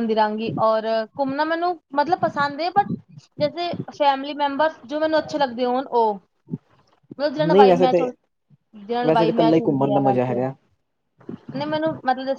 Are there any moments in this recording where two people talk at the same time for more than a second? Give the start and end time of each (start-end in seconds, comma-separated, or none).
9.1-10.4